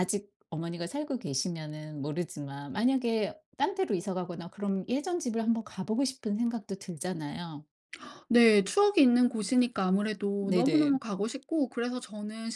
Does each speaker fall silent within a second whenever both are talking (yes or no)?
yes